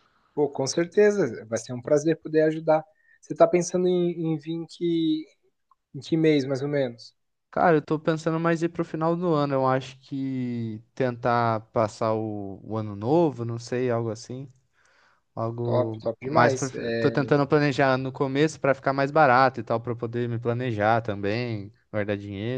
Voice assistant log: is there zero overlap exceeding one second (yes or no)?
no